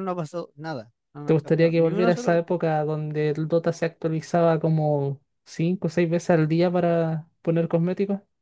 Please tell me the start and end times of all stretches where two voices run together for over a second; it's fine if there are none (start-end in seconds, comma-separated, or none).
1.2-2.6